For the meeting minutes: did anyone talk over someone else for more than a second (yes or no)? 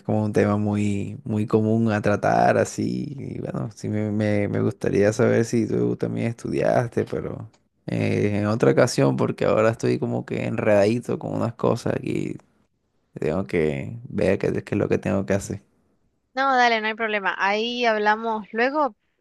no